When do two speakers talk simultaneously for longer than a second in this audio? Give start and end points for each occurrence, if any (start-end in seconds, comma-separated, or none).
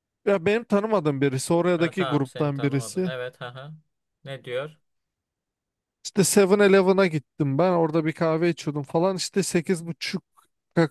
1.8-3.1